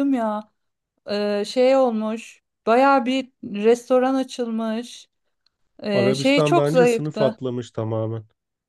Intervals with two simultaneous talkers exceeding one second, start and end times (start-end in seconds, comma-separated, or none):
5.9-7.4